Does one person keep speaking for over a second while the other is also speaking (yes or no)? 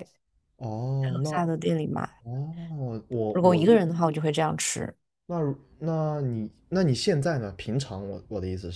no